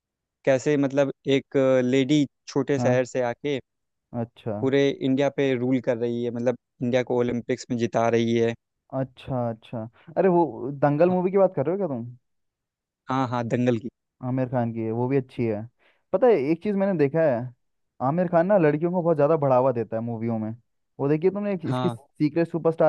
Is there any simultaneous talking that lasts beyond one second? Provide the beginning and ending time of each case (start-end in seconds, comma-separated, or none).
none